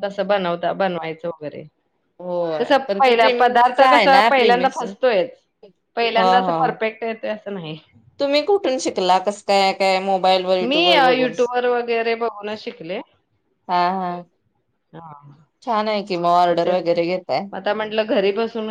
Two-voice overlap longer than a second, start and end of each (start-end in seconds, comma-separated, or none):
2.6-4.8